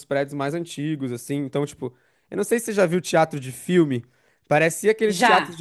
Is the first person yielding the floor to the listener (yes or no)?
no